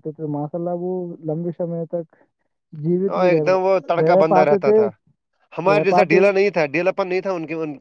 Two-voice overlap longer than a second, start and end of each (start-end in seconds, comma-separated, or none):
3.1-4.8